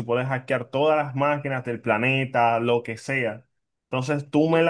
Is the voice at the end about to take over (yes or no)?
no